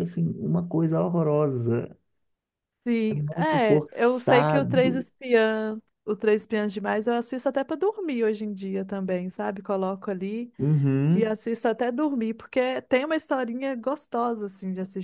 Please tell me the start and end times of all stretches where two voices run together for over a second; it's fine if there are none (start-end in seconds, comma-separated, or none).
3.1-5.1